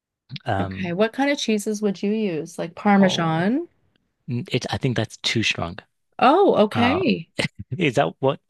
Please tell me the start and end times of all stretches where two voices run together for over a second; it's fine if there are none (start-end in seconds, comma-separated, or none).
none